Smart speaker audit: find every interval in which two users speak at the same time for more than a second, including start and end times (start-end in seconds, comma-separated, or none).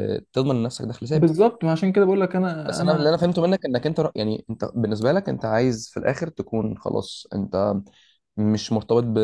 none